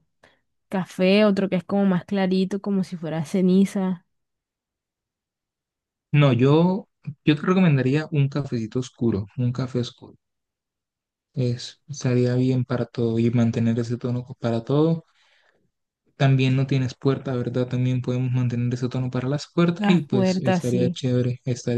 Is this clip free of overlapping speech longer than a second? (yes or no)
no